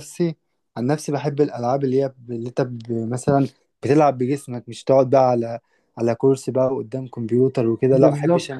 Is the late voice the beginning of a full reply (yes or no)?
yes